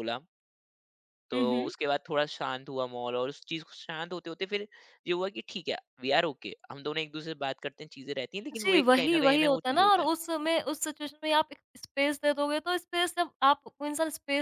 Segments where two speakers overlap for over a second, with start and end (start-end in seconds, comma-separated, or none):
8.6-10.1